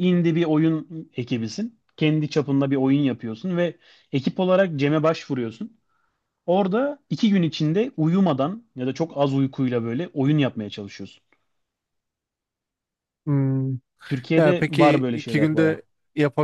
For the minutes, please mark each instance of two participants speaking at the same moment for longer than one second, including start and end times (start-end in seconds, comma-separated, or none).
14.3-15.8